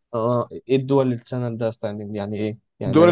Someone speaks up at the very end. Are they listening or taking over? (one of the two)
taking over